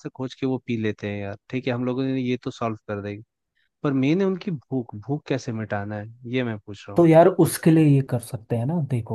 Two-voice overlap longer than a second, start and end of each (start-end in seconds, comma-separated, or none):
none